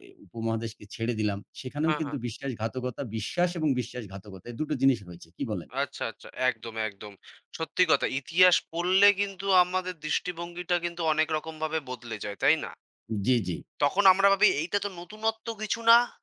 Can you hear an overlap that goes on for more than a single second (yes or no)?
no